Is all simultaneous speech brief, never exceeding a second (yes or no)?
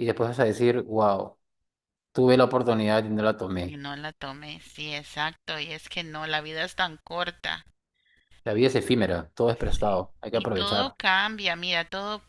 no